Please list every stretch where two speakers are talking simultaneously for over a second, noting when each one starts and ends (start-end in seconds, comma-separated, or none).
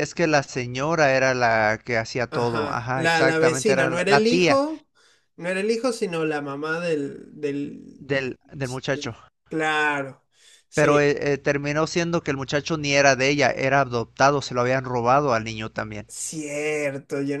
2.3-4.6